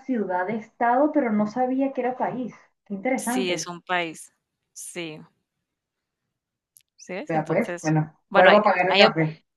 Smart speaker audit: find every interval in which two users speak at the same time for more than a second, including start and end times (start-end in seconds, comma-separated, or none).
7.3-9.0